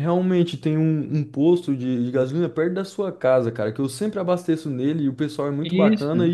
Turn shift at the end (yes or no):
no